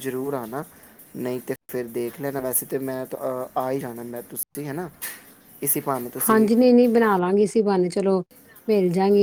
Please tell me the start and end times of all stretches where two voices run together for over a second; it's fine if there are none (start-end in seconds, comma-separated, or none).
none